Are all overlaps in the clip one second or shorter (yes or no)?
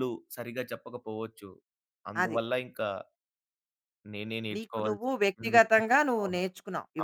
no